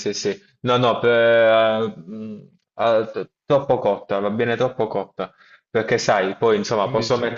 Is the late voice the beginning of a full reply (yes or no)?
no